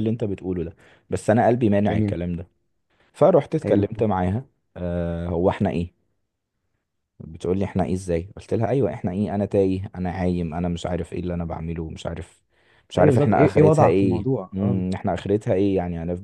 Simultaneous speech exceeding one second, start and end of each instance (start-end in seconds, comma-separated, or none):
13.0-14.8